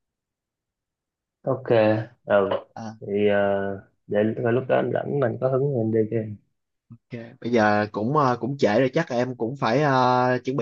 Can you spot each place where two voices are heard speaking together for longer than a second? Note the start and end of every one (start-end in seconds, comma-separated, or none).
none